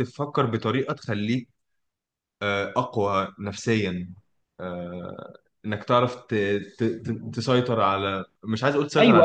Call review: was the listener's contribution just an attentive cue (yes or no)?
no